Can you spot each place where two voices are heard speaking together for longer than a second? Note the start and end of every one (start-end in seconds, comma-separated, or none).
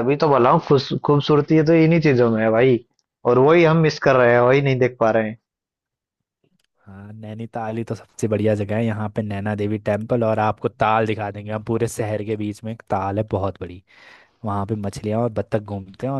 none